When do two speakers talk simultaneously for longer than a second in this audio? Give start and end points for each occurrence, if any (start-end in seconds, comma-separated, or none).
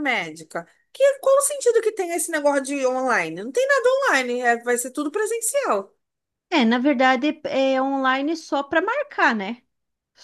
none